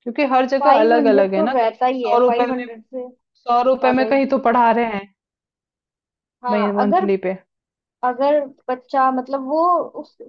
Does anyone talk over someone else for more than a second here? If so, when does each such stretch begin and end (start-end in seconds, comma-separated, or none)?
0.6-2.6